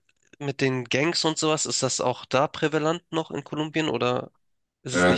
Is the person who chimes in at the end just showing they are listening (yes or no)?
no